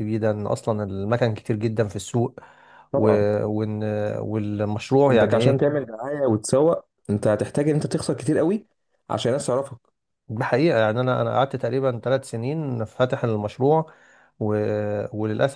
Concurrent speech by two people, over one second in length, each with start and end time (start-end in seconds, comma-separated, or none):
none